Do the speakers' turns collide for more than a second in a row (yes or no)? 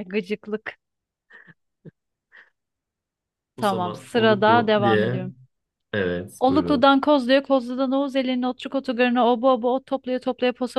yes